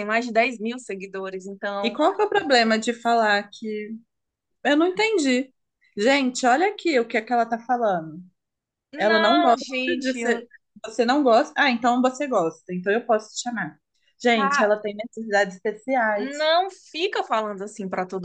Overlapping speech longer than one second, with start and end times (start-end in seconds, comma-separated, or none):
9.0-10.4